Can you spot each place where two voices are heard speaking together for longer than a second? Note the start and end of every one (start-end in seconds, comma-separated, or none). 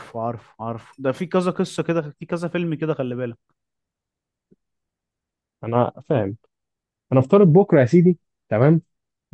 none